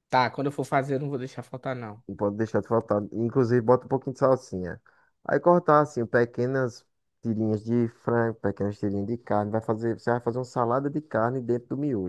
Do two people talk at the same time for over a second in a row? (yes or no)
no